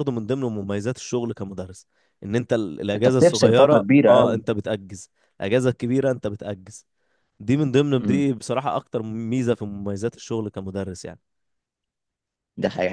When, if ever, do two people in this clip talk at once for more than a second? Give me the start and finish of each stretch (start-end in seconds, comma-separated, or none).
3.0-4.4